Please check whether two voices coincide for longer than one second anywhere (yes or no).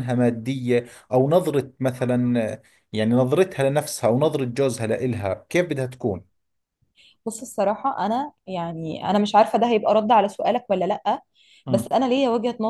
no